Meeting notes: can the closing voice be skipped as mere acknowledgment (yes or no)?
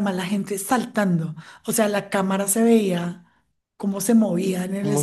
yes